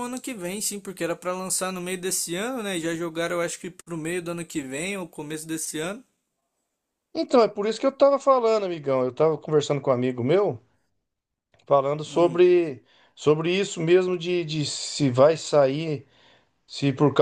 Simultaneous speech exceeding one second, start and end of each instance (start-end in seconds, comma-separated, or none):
none